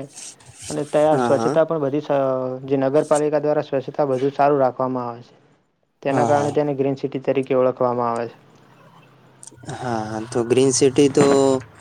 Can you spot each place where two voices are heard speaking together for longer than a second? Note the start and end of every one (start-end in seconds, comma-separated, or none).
none